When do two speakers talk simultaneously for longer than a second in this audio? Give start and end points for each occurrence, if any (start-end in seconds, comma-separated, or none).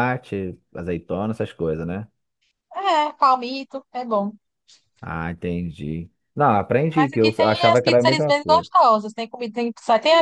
7.0-8.7